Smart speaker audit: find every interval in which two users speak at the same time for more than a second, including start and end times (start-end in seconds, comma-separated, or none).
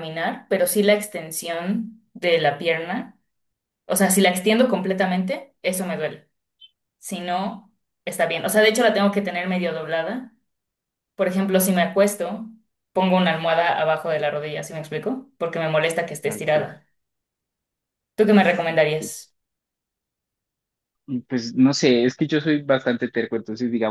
none